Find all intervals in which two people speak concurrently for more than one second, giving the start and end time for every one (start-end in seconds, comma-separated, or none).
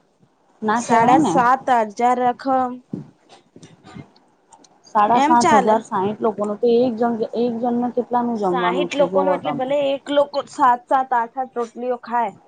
8.4-9.7